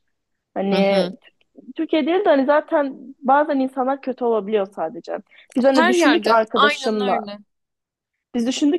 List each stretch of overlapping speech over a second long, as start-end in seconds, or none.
5.7-7.3